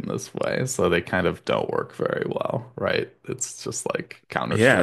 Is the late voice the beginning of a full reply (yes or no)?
yes